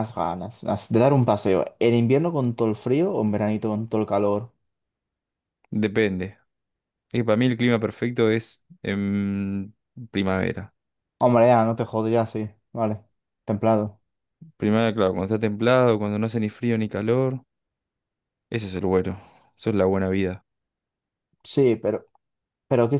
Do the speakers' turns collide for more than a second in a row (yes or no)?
no